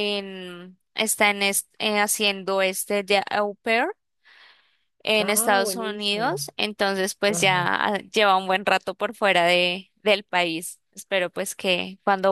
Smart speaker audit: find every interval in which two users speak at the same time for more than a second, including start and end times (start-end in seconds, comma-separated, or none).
5.2-6.4